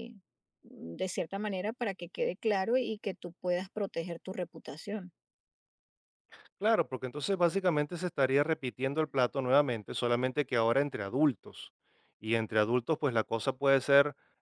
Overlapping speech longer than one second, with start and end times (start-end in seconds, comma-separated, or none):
none